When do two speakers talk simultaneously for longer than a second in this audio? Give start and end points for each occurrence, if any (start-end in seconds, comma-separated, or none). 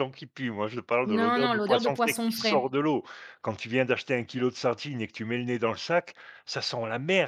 1.0-2.7